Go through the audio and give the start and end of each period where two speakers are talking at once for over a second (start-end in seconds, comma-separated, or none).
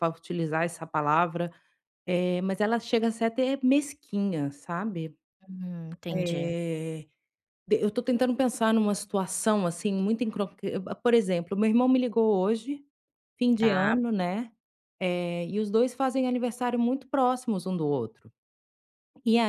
none